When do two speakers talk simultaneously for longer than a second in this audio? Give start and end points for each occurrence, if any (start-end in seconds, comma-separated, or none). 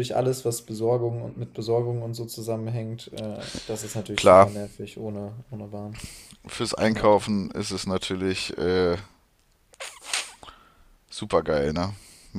none